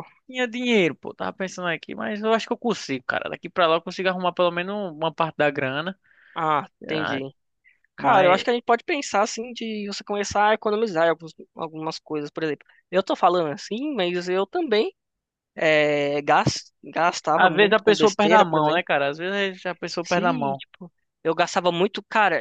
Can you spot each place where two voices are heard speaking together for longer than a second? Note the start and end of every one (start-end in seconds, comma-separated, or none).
17.3-18.8